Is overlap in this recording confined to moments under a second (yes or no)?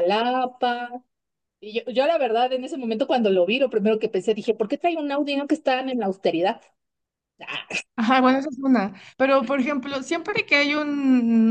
yes